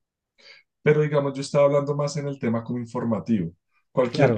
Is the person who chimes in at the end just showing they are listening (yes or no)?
yes